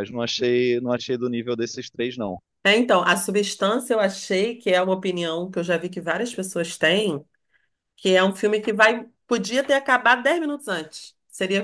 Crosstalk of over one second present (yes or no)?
no